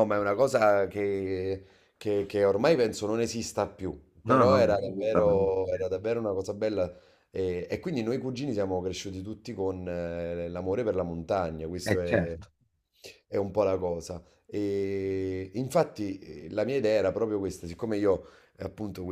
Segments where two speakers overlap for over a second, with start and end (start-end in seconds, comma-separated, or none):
4.2-5.5